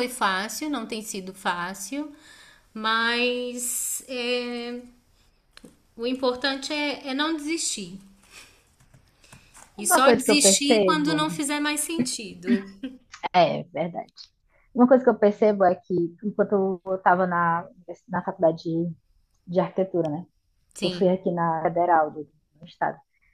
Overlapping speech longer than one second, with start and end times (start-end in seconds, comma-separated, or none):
9.8-11.2